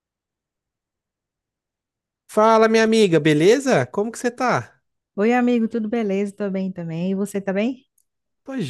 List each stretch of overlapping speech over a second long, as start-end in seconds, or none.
none